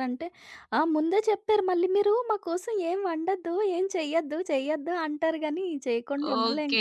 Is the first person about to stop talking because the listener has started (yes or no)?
yes